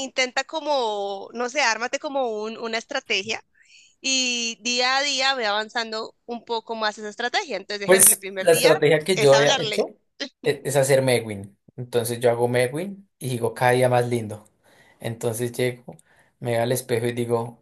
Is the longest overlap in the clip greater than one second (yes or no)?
yes